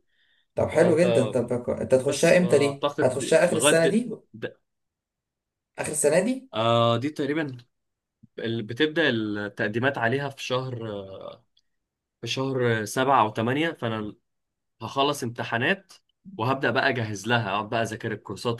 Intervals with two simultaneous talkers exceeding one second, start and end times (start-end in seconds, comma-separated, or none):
1.9-3.8